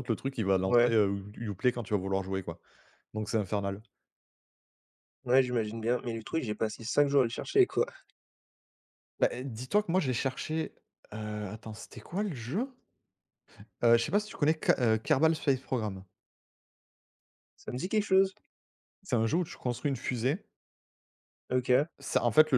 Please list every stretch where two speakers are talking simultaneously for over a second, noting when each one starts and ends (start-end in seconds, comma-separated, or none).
none